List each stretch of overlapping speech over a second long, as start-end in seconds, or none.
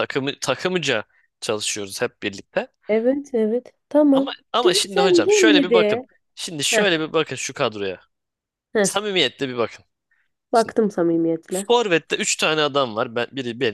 4.1-6.0